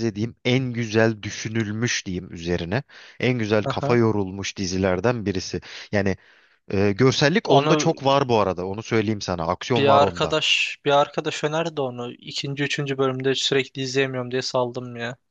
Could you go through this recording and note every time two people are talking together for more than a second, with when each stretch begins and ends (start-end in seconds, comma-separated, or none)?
none